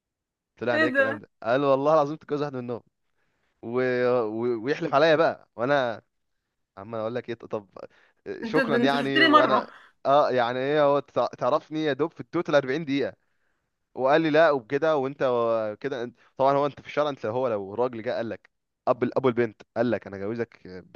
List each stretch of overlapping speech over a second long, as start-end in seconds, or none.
8.4-9.7